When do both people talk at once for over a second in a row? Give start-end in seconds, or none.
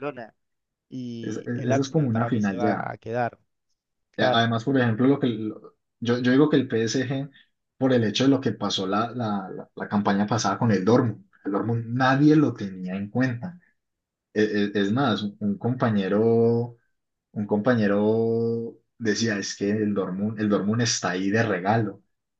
1.2-2.9